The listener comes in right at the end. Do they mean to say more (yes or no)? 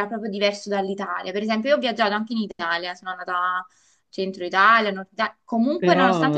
yes